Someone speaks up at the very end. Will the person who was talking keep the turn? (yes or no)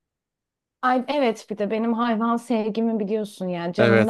no